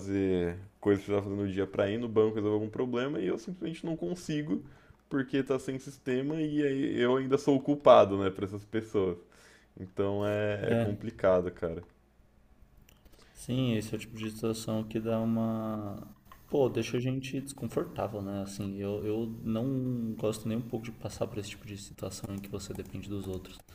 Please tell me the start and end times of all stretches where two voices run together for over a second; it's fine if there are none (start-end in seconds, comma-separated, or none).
none